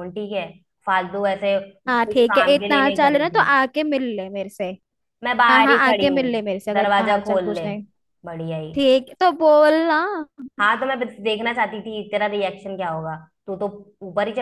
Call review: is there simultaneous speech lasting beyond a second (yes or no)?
yes